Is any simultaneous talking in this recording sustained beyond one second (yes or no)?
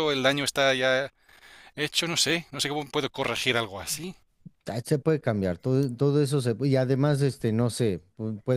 no